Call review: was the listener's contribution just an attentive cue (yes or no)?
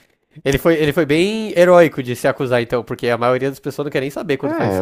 no